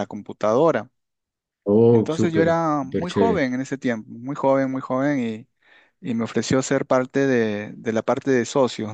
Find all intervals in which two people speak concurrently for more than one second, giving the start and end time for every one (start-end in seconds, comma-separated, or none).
1.9-3.4